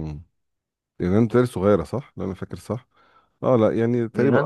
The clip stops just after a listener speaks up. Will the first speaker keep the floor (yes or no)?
yes